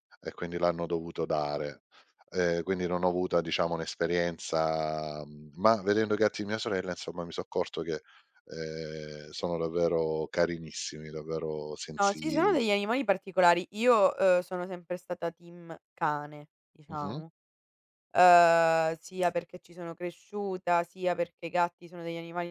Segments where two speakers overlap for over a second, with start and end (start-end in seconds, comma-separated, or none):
none